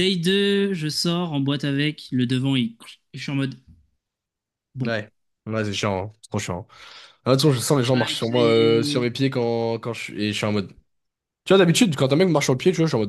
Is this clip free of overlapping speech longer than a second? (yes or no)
no